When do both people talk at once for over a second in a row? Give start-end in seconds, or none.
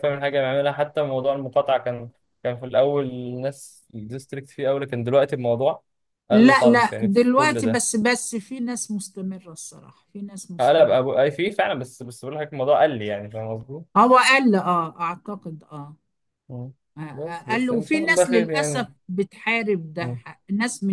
6.3-7.8, 17.1-18.9